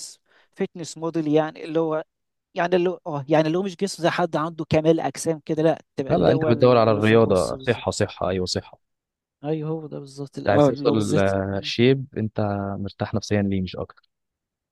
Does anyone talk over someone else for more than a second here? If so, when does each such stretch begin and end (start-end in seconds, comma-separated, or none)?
6.1-7.8, 10.4-11.7